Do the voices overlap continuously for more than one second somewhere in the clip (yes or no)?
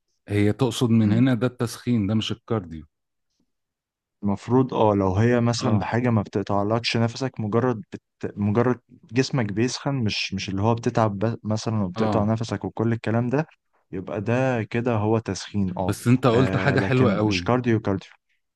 yes